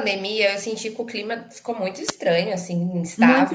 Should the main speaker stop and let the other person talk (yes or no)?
yes